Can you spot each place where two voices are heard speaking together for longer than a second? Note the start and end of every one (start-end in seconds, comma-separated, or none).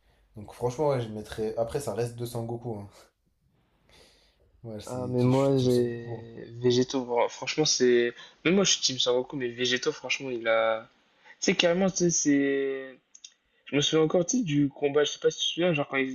4.8-6.2